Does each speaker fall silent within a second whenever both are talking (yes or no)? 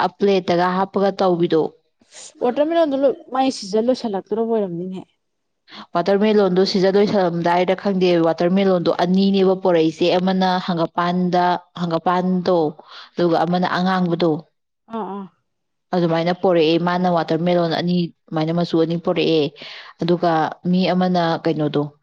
yes